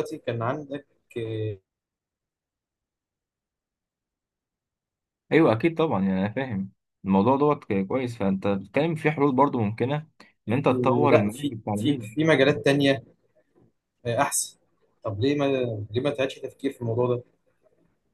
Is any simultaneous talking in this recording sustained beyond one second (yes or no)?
yes